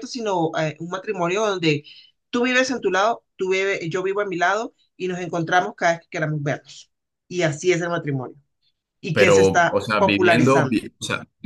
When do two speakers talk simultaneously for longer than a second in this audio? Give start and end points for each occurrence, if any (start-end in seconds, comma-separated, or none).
9.1-10.8